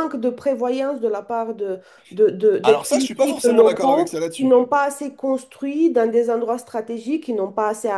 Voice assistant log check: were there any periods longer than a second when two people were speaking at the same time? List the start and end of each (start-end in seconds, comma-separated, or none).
2.6-4.6